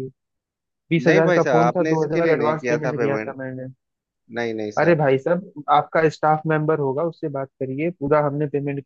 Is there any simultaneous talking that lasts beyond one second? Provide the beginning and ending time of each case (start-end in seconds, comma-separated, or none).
1.0-3.4